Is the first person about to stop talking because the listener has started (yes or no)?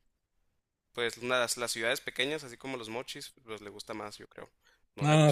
yes